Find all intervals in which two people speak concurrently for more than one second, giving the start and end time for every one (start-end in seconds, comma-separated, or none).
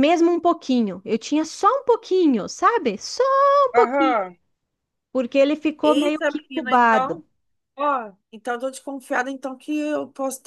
5.8-7.2